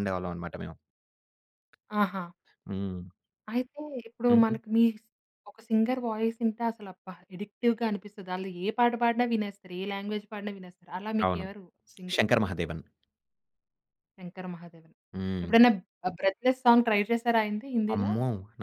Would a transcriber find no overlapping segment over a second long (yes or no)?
yes